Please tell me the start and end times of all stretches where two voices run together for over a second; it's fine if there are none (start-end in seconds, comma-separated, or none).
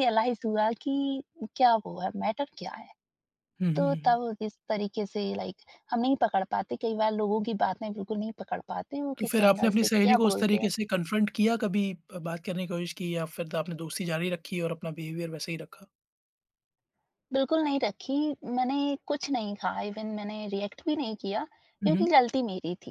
9.2-10.7